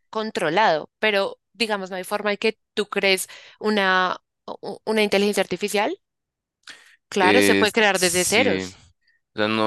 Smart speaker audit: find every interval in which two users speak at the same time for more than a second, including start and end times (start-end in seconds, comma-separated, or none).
7.2-8.6